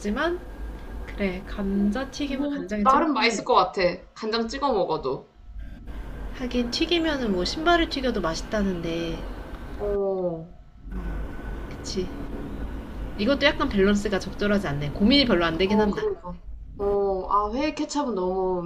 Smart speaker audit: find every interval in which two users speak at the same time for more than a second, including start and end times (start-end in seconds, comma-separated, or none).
2.2-3.8